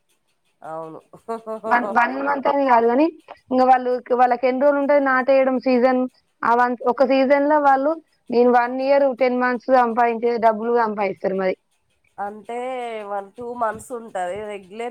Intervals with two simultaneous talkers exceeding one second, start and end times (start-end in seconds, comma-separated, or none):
none